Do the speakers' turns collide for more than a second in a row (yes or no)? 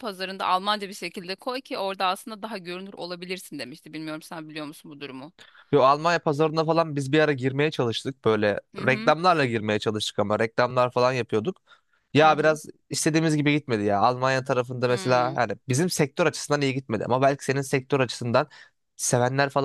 no